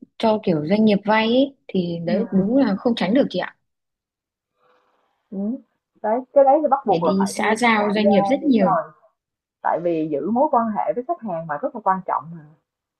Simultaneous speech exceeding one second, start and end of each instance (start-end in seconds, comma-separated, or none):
6.8-8.8